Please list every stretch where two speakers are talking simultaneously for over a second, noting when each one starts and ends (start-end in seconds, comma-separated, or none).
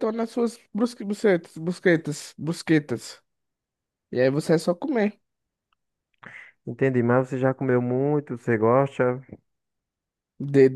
none